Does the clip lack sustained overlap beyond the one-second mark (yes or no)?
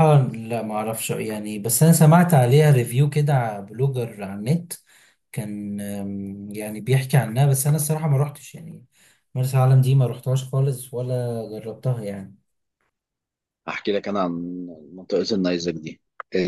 yes